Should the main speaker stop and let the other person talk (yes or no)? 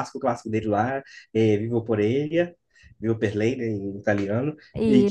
no